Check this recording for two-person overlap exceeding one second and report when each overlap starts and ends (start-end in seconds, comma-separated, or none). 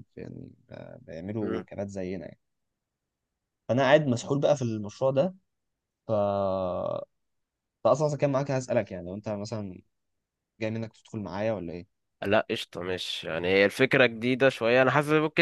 none